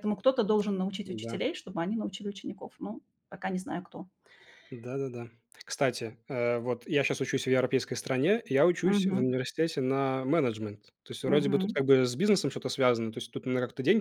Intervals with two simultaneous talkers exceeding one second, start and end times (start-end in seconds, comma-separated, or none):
none